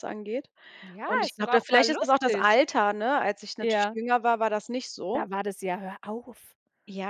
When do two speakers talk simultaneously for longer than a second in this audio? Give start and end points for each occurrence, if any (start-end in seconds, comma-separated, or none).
1.0-2.5